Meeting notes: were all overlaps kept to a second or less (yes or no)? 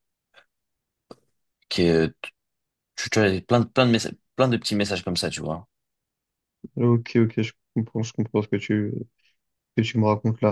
yes